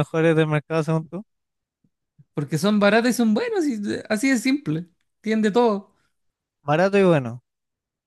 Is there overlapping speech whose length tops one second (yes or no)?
no